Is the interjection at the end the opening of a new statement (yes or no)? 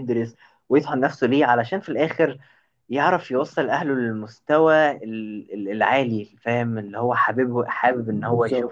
no